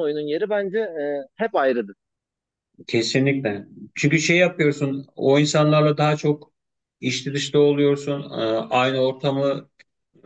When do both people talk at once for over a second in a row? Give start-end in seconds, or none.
none